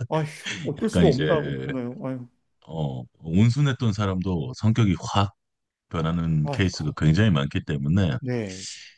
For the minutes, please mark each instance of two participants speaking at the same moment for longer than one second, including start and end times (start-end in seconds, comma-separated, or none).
none